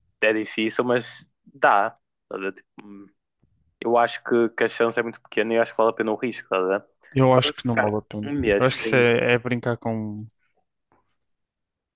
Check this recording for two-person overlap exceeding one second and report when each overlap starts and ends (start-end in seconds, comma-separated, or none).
7.3-9.1